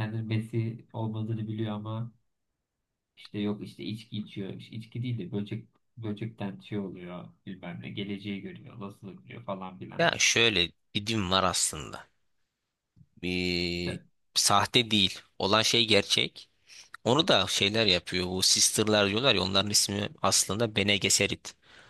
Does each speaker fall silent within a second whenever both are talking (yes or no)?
yes